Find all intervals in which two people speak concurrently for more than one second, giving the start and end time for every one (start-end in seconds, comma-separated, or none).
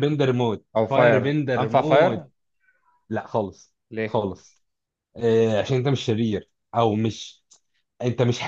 0.8-2.3